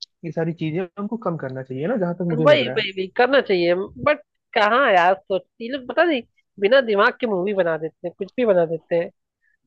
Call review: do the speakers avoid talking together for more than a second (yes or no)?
yes